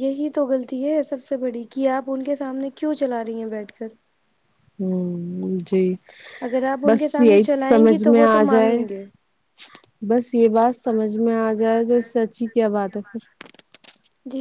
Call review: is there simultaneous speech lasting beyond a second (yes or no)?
yes